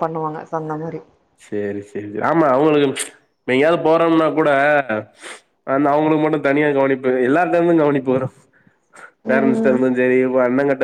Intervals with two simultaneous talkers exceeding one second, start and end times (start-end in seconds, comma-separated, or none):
none